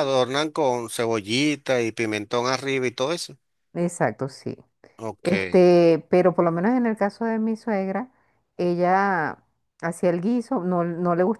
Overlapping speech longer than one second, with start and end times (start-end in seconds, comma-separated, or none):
none